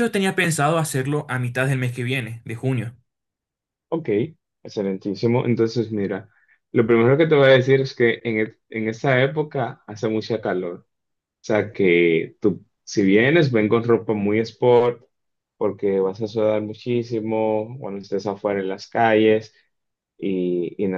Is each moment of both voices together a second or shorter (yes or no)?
yes